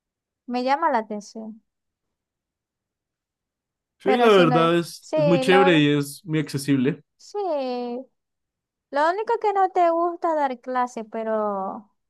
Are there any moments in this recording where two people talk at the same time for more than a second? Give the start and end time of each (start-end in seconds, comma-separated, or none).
4.0-5.9